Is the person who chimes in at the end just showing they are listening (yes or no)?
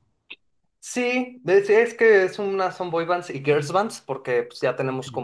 yes